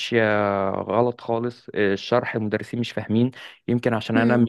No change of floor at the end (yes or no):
yes